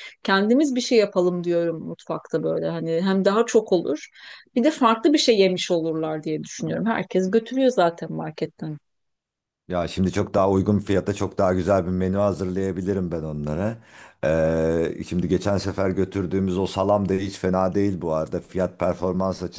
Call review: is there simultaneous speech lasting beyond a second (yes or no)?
no